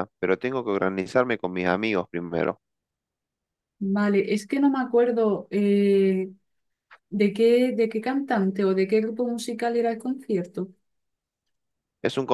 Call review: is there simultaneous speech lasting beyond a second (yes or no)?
no